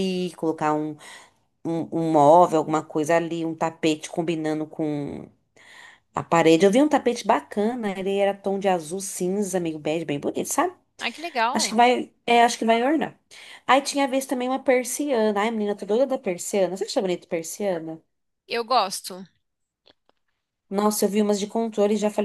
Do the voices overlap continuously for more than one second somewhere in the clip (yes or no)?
no